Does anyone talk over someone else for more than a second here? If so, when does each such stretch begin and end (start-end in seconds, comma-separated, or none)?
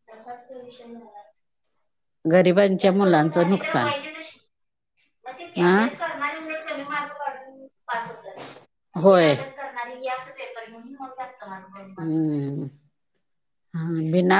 none